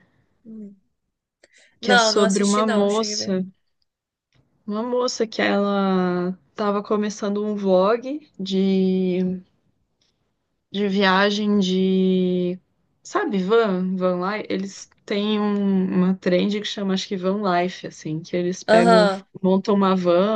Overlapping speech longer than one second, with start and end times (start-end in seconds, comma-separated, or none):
1.8-3.4